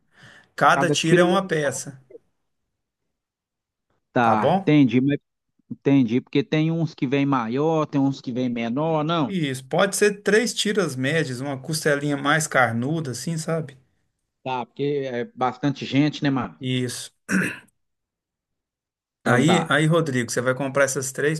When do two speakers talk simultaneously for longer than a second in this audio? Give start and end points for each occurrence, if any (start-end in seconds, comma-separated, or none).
0.7-1.9